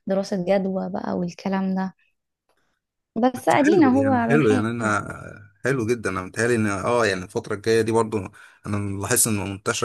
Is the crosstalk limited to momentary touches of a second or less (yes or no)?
no